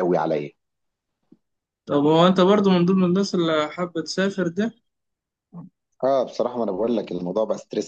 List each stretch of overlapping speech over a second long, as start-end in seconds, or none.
none